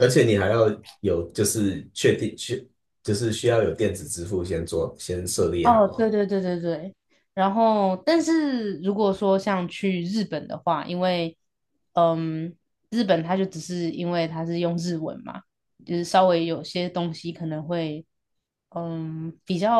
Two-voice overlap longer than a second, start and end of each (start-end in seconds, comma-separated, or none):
none